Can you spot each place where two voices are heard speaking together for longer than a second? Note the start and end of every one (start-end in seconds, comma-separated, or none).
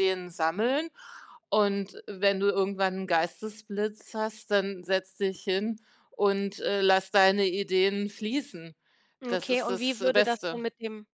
9.3-10.6